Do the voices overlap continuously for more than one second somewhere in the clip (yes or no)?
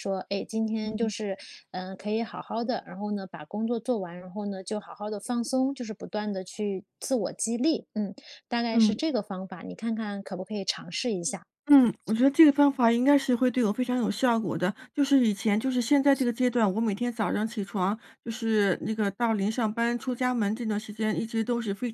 no